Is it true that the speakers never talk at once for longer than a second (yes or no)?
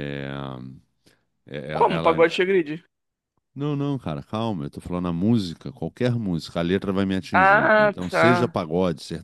no